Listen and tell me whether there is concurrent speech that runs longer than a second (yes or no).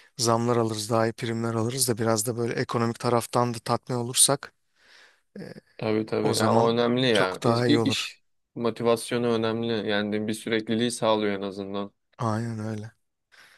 yes